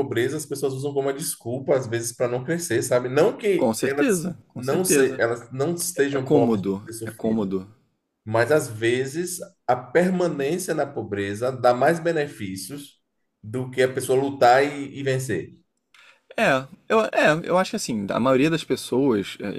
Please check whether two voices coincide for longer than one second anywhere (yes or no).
yes